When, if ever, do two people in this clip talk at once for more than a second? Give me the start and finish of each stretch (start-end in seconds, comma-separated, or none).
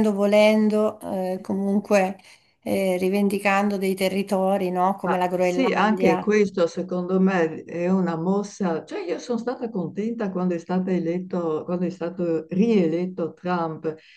5.0-6.3